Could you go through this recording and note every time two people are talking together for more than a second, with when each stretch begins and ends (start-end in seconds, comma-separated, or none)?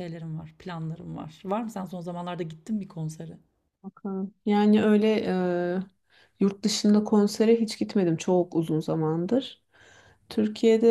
none